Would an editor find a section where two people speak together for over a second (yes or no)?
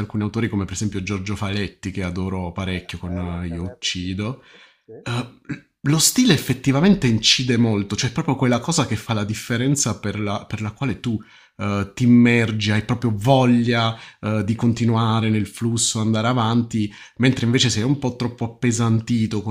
yes